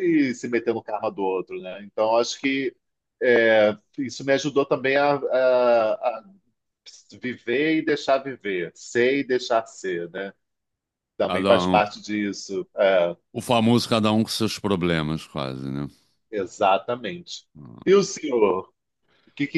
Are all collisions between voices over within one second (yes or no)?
yes